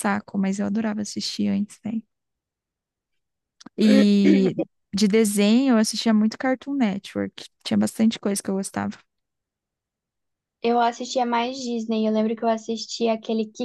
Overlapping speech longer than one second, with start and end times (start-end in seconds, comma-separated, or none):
none